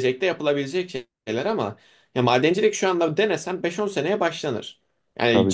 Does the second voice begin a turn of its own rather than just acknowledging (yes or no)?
no